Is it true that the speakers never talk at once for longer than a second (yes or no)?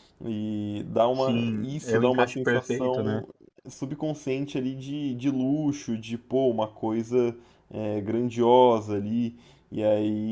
no